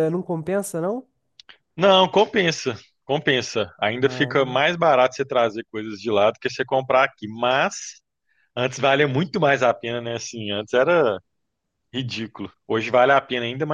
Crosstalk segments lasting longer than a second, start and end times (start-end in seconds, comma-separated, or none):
none